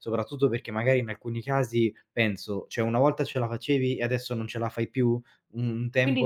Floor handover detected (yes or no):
yes